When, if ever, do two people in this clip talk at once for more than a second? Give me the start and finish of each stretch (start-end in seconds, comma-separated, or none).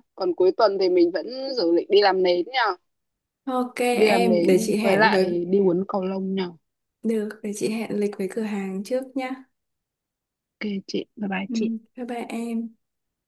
3.9-5.3